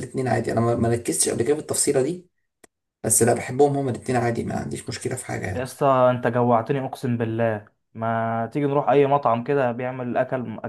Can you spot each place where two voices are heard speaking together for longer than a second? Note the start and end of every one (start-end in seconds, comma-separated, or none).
none